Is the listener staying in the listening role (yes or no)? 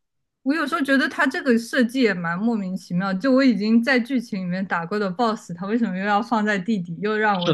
no